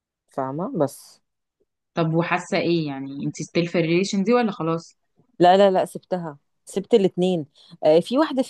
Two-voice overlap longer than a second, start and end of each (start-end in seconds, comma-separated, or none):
none